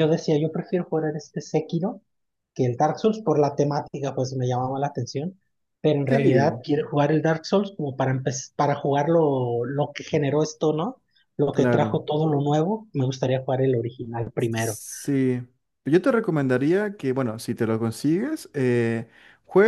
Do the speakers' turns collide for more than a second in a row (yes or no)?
no